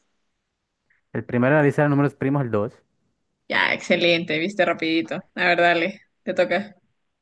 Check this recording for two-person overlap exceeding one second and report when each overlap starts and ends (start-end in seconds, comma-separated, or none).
none